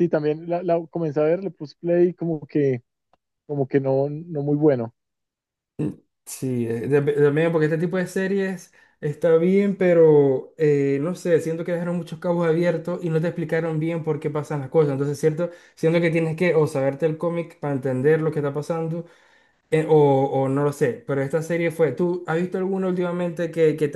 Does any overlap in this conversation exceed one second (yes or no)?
no